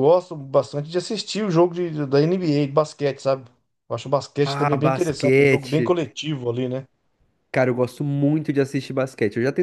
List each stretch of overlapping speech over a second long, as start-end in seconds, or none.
4.5-5.9